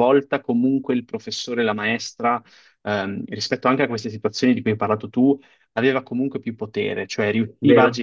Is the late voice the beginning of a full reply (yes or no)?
no